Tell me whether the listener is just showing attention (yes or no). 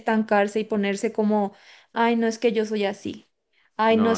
no